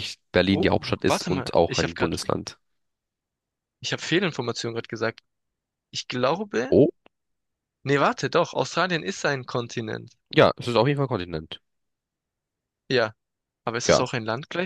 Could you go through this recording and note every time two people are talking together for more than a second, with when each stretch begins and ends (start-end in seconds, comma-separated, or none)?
0.5-2.2